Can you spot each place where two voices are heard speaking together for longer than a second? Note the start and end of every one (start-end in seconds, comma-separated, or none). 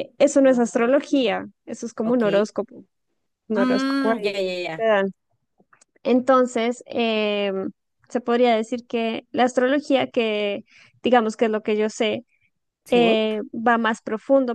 3.5-4.8